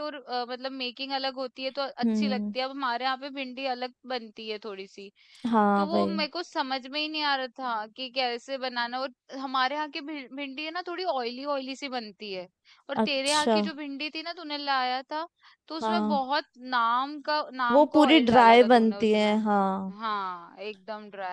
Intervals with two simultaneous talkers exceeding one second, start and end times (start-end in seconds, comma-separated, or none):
17.7-19.4